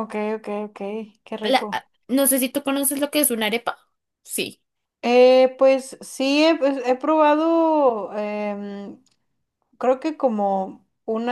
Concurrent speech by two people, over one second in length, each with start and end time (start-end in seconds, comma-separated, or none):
none